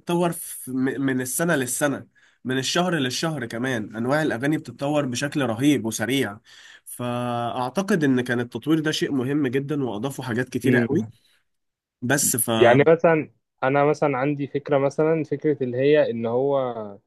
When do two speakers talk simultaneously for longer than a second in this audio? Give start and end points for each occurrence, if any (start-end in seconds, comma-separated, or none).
none